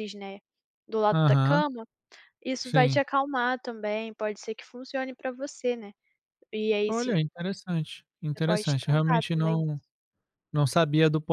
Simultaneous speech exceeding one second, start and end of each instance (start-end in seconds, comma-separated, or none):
8.3-9.6